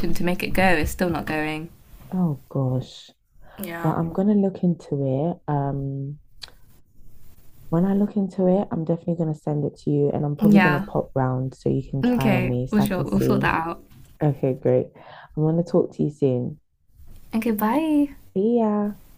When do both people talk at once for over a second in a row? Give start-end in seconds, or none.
12.0-13.5